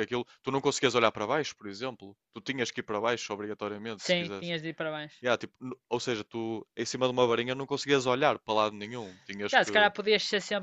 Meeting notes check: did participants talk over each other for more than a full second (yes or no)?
no